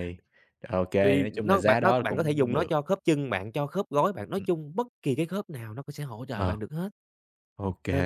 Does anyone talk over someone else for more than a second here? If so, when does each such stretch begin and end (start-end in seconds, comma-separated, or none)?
1.0-2.7